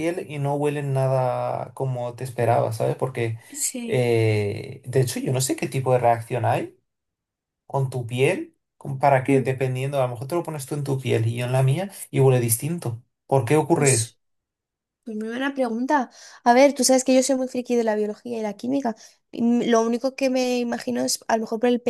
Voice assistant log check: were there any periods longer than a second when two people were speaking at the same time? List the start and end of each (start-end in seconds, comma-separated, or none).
none